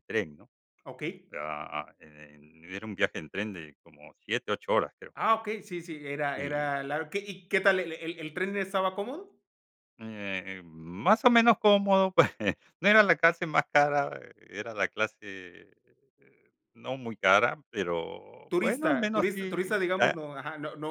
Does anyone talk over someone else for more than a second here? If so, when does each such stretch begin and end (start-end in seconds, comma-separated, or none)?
18.5-20.2